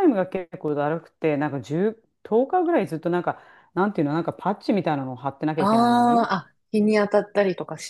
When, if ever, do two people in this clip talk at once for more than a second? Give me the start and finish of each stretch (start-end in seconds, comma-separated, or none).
none